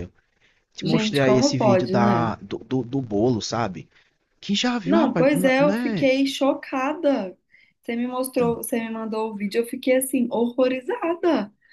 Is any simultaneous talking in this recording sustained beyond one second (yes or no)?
yes